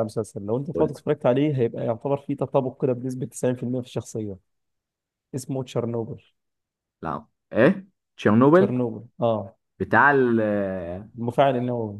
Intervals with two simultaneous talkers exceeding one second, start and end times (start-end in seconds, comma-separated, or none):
none